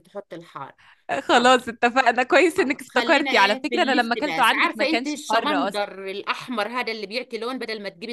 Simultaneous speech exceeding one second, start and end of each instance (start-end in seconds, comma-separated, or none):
2.6-5.8